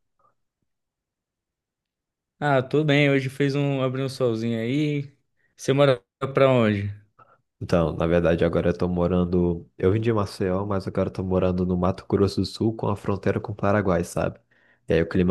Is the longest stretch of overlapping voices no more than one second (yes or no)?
yes